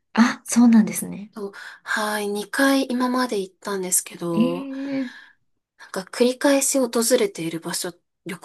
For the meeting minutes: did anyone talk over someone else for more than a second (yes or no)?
no